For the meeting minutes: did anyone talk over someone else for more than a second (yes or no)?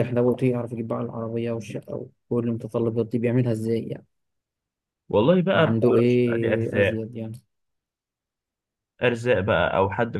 yes